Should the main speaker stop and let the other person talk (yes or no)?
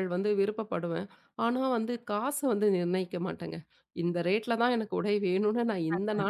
no